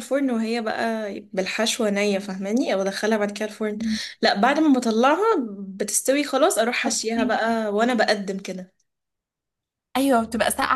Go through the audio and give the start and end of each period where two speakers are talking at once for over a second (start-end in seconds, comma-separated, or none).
none